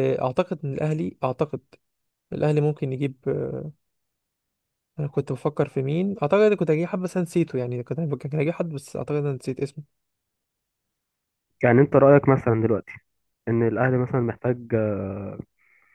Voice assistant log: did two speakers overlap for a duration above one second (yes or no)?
no